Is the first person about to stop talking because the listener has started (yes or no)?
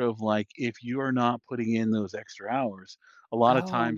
no